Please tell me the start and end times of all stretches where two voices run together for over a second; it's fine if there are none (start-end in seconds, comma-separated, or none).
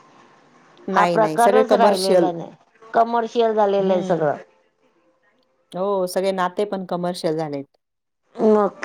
0.9-2.3